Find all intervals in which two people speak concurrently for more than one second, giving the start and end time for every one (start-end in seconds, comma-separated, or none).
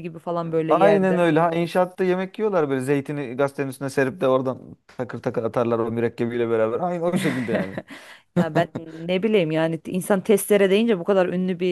none